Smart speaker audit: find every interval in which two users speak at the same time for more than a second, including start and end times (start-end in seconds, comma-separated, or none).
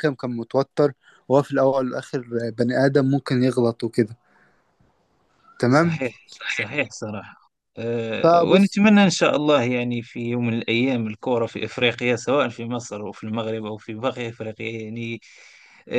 none